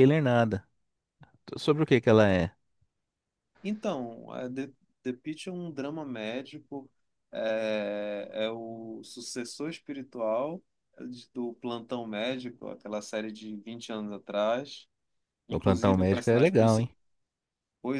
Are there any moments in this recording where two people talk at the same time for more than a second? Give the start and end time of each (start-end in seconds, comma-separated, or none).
15.5-16.9